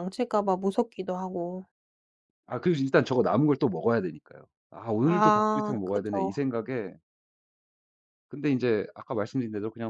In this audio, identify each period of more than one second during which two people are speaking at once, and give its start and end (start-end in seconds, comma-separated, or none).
5.0-6.4